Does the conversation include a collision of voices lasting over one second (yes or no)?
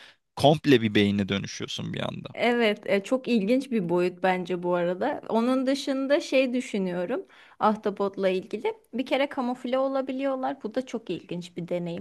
no